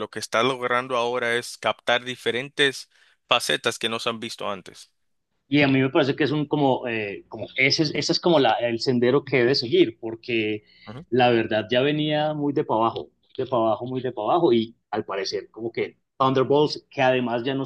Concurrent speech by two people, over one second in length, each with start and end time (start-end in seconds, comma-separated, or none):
none